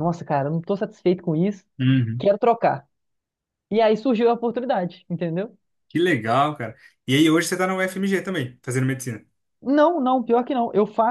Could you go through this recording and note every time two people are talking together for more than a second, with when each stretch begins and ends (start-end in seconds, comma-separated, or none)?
none